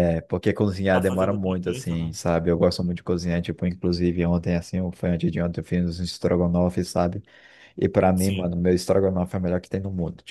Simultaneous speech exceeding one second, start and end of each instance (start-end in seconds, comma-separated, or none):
0.9-2.1